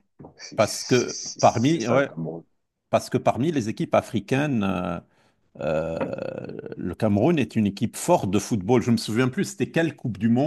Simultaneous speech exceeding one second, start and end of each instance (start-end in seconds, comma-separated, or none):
0.5-2.1